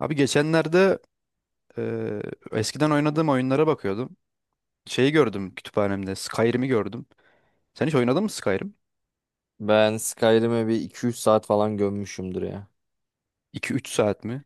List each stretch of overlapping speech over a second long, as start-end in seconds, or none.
none